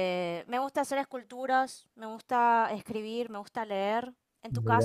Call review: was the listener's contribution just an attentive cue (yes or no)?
no